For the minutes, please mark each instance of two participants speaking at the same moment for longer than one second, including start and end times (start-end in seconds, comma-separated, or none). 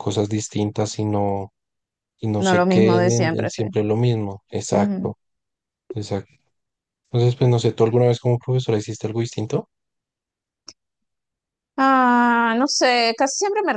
2.4-3.6